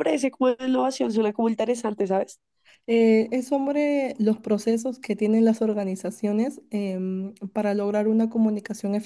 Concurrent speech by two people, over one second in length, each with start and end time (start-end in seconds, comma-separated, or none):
none